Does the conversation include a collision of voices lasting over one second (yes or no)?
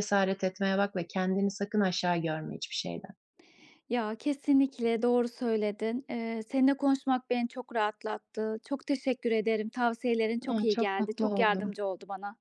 yes